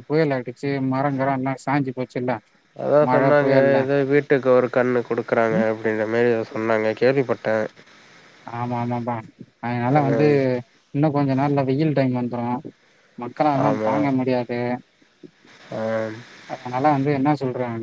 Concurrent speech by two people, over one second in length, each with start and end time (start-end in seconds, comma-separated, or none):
none